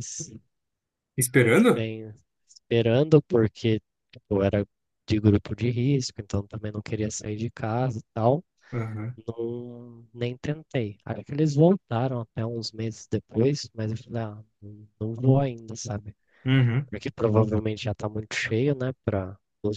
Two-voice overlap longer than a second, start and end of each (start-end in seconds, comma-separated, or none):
none